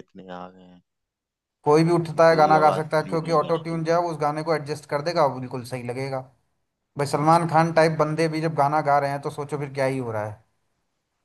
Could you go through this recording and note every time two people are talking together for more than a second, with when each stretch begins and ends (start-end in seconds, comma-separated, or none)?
1.6-4.0